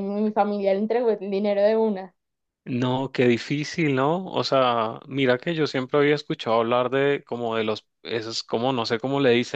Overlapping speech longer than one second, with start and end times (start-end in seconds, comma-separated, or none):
none